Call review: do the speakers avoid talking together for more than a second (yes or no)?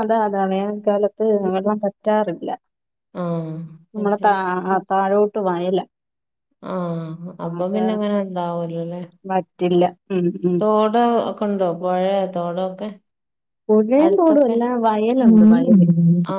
yes